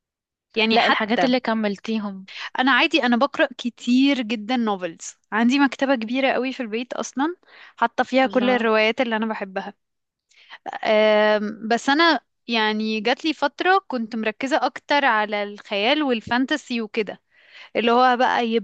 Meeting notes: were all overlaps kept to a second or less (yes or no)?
yes